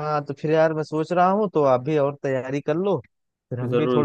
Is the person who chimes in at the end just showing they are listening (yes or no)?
yes